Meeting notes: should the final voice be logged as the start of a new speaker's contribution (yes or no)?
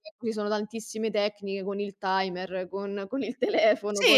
yes